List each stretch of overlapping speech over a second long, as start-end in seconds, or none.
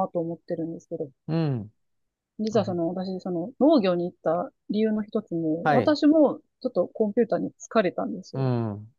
none